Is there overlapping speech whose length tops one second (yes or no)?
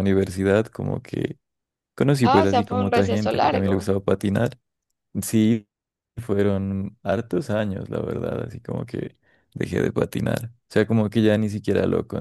yes